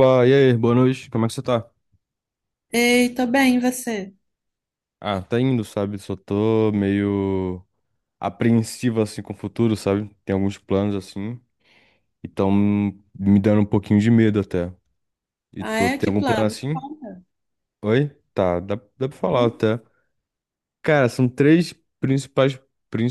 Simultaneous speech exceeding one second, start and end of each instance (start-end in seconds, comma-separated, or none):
15.6-16.8